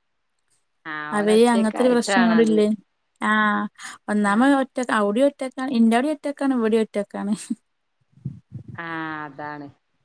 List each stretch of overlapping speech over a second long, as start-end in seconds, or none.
1.2-2.6